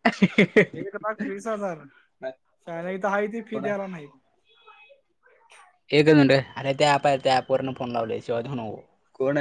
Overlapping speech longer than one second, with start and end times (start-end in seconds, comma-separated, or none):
none